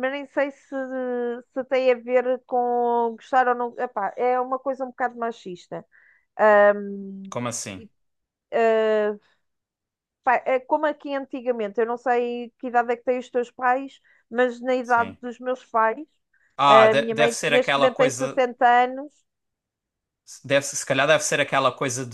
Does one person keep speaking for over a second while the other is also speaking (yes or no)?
yes